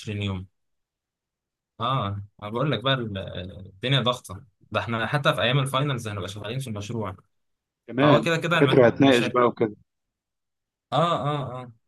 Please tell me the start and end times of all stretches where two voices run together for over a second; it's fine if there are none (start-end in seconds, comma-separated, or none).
8.0-9.4